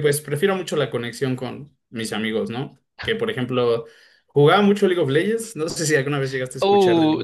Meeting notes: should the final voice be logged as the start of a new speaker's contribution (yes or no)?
yes